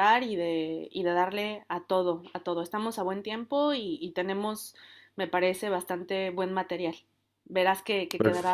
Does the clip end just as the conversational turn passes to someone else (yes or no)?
no